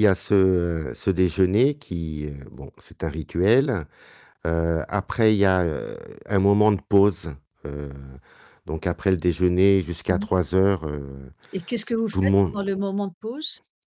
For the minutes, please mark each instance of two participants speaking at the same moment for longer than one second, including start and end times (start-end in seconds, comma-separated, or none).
none